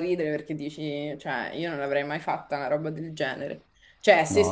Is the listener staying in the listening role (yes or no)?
yes